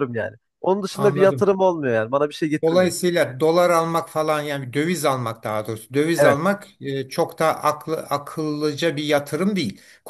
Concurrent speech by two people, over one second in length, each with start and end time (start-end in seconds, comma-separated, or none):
none